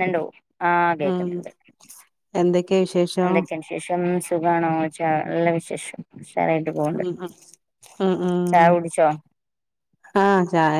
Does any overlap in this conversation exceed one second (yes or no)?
no